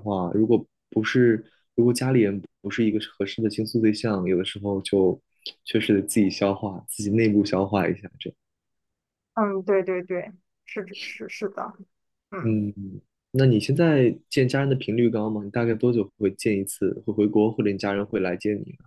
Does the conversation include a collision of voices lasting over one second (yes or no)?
no